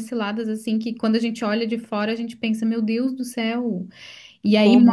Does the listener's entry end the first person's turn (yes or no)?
no